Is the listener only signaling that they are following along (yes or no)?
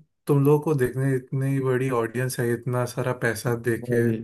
yes